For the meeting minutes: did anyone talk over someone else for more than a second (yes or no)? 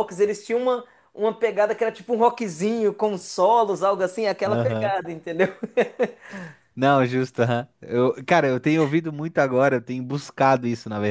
no